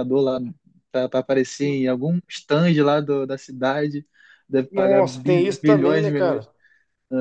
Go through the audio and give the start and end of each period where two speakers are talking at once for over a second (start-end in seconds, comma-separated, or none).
4.7-6.5